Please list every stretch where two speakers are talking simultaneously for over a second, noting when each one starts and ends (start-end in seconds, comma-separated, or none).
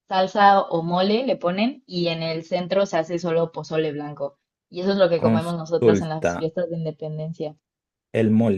5.2-6.5